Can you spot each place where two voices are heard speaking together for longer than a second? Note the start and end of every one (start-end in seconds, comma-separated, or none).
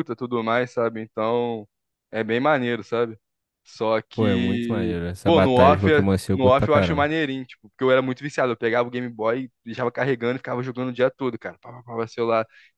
4.1-7.1